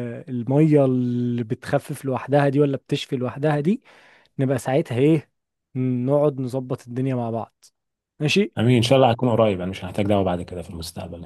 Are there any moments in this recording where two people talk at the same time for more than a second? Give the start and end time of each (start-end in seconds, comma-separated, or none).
none